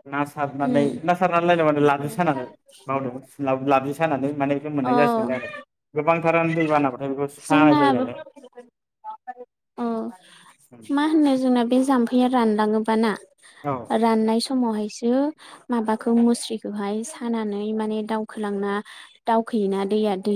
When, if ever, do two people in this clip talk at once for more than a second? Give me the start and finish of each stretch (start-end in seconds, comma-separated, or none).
none